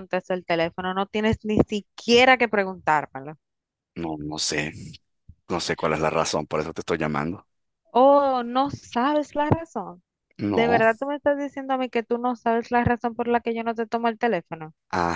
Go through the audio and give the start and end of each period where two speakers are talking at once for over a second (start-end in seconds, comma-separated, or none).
none